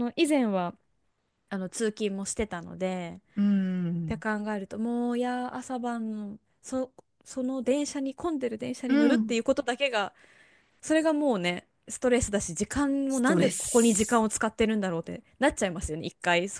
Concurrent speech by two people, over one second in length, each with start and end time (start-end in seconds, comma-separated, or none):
13.1-14.3